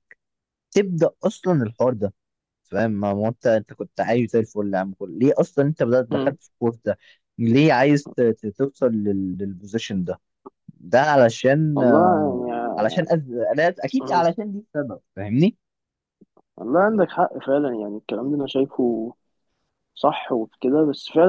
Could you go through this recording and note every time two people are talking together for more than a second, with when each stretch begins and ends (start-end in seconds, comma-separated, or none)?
11.8-13.0